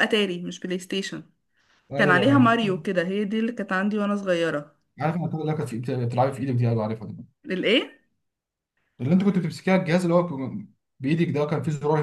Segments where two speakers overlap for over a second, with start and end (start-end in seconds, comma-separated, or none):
none